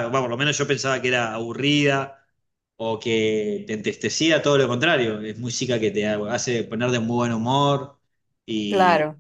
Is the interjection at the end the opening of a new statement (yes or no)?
yes